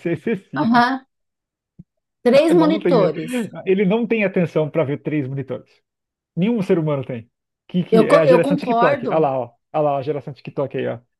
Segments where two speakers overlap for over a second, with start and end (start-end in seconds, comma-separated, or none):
7.9-9.3